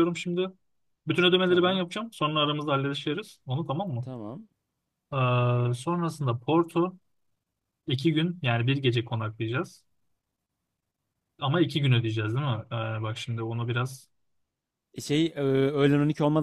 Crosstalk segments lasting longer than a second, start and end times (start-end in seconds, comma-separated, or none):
none